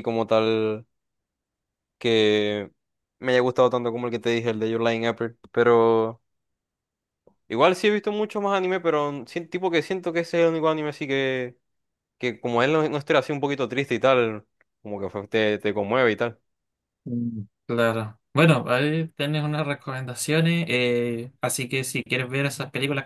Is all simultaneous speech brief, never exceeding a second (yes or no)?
yes